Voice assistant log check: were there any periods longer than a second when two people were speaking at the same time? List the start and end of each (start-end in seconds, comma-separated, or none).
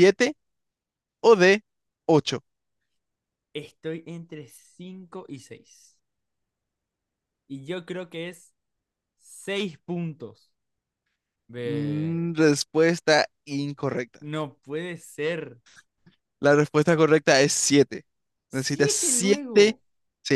18.5-19.8